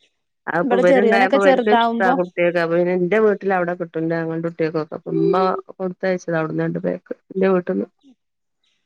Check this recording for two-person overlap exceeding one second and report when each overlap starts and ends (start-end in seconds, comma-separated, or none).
0.6-2.1